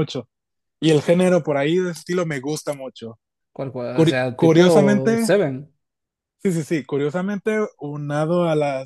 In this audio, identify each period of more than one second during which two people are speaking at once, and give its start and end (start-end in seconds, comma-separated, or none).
3.9-5.3